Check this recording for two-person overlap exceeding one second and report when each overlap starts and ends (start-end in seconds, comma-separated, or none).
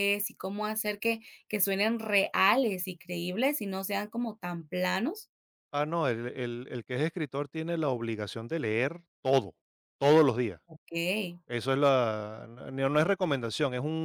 none